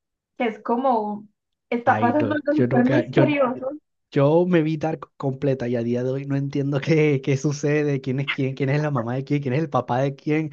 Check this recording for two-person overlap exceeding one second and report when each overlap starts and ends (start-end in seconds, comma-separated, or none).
1.8-3.2